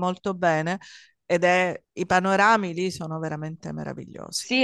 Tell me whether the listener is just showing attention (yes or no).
no